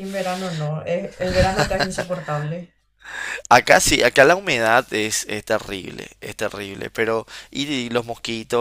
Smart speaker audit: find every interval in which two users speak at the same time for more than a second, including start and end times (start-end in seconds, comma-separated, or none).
none